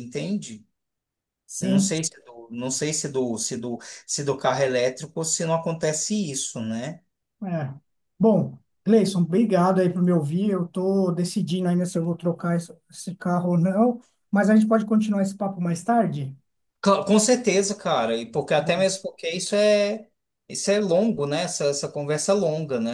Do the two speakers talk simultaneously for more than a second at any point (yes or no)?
no